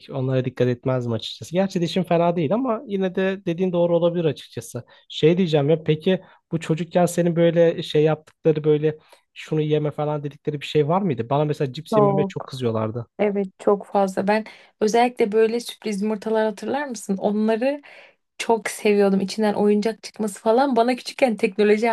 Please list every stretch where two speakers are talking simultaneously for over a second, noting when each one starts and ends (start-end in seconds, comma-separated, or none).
none